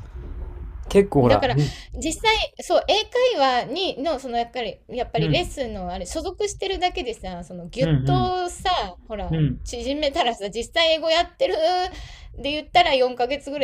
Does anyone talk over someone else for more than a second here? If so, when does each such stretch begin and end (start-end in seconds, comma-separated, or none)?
none